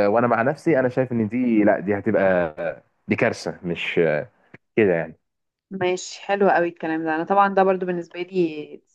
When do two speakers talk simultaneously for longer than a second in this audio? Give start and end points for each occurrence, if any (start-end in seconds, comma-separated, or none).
none